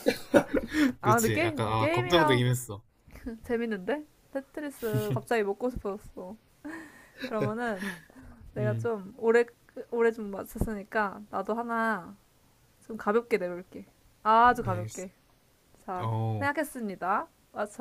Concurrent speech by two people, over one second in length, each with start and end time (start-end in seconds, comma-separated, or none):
1.0-2.4